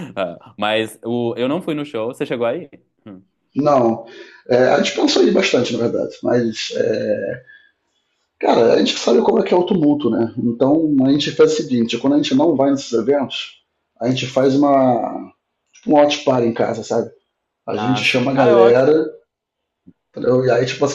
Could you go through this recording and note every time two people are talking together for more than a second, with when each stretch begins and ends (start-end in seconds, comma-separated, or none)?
17.8-19.0